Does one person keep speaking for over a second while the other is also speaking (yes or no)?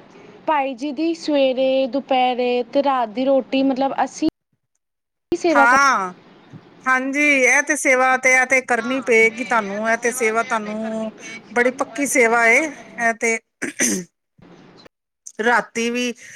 no